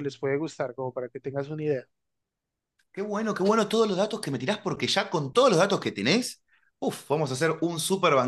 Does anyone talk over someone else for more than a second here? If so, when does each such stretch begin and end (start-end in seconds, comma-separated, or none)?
none